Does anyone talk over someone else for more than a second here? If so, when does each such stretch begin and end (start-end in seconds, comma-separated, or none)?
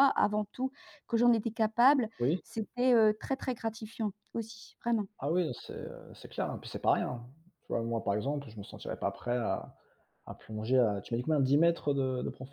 none